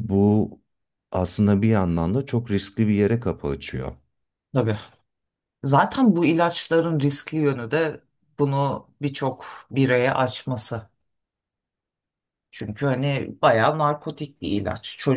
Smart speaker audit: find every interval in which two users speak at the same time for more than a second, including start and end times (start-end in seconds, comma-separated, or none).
none